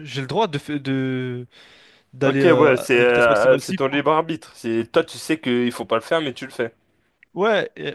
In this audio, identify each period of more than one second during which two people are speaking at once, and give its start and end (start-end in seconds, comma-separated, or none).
2.2-4.0